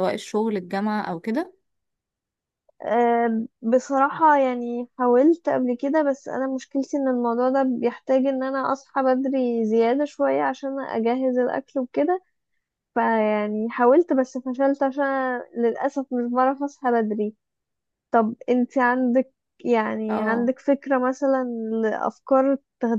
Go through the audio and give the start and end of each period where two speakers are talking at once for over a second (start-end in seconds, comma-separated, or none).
none